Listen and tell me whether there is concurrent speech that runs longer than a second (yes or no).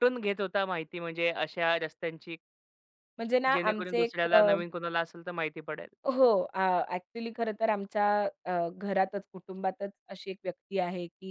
no